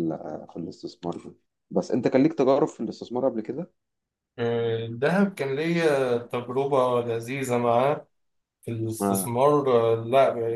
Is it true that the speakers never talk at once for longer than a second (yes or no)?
yes